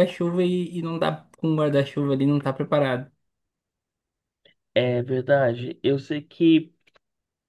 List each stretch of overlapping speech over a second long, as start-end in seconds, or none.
none